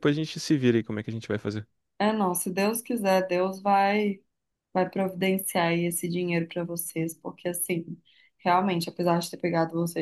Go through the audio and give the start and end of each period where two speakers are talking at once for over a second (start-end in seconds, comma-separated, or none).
none